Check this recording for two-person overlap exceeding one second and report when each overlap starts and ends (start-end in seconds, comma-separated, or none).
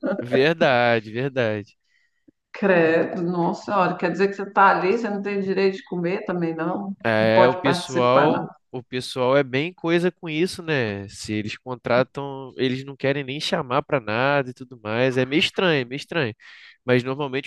7.1-8.5